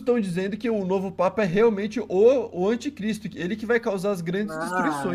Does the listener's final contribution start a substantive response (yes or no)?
yes